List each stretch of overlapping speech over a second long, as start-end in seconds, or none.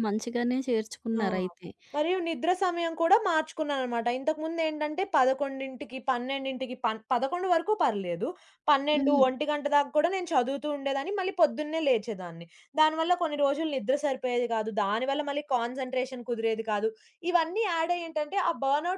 none